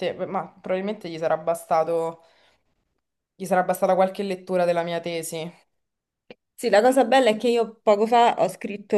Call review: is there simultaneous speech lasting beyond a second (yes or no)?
no